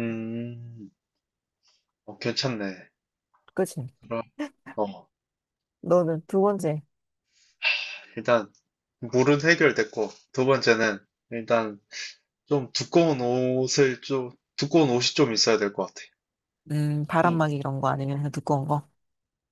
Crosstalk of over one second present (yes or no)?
no